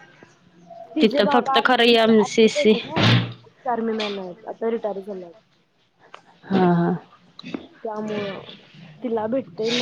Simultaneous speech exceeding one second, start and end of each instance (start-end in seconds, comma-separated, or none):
1.0-2.7